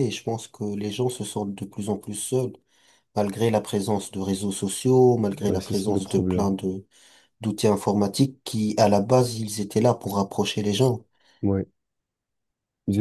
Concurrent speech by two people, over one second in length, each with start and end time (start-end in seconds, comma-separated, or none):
5.3-6.5